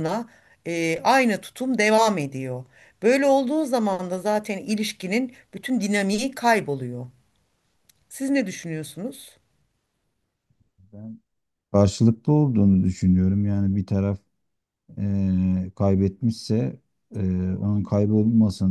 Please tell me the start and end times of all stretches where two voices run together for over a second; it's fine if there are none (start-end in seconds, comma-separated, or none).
none